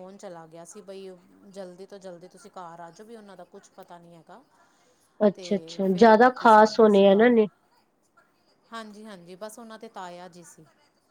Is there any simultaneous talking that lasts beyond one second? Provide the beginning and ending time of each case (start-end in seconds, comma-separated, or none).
5.3-7.4